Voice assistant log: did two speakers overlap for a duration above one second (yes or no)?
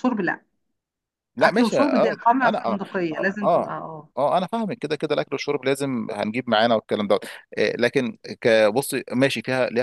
yes